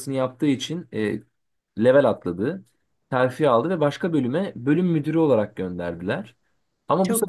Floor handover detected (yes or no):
no